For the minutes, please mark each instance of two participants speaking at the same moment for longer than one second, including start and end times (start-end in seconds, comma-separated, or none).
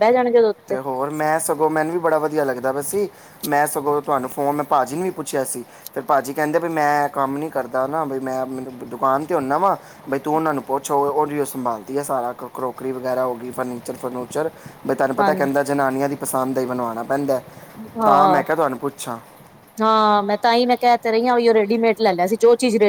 none